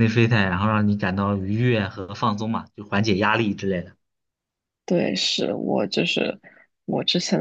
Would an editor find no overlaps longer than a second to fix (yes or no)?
yes